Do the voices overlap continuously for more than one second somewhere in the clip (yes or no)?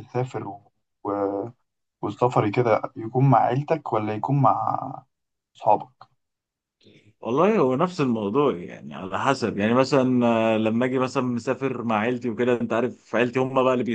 no